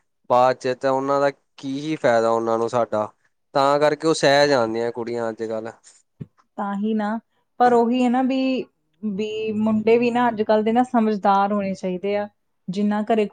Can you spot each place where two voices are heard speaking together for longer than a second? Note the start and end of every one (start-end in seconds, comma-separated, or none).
none